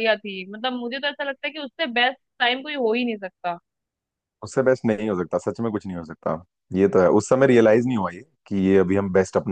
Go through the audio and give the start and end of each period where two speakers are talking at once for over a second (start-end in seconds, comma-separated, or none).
none